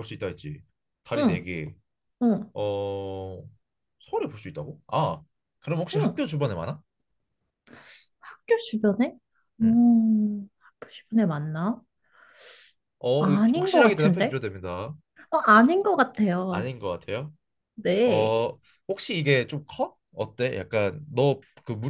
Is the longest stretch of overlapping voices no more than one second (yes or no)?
no